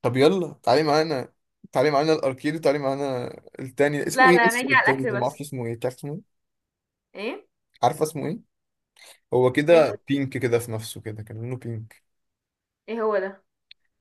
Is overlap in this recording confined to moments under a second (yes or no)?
no